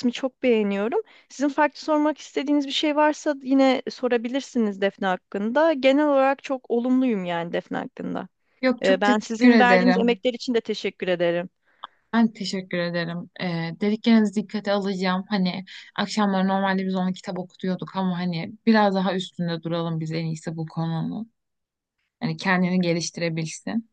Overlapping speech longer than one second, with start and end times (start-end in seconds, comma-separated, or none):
8.8-10.2